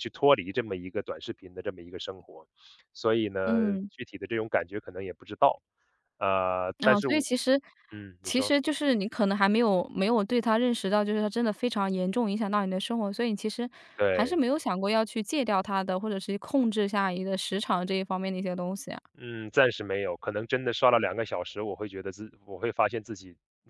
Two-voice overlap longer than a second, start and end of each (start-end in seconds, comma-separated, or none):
none